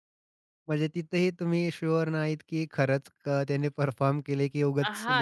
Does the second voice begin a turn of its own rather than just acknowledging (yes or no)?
yes